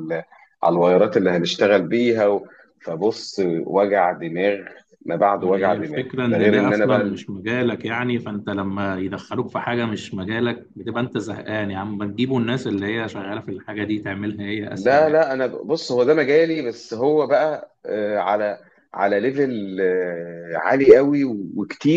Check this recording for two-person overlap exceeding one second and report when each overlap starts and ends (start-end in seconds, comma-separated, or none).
5.4-7.2